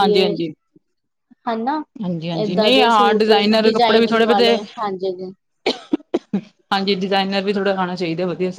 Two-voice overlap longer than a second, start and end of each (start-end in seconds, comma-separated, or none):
2.4-4.6